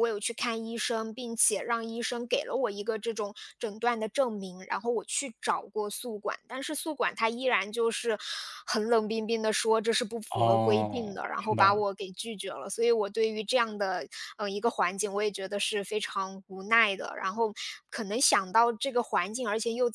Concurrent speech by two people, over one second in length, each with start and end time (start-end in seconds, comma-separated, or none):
10.3-11.8